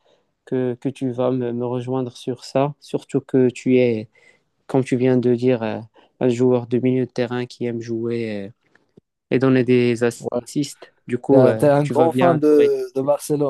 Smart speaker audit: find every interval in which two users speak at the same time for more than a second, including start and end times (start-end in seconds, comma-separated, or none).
11.3-12.8